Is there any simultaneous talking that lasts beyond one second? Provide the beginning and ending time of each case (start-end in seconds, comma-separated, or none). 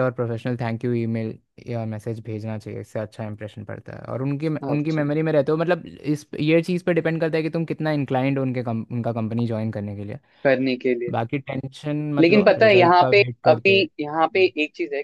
12.2-14.5